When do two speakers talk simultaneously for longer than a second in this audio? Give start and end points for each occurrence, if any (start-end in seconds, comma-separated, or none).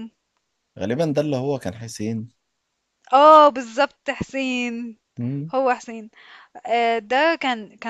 none